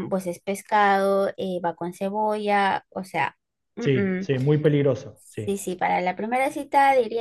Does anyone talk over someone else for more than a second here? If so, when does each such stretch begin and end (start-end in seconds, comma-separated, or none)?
none